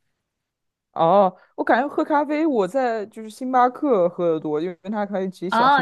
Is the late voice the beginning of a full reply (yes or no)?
yes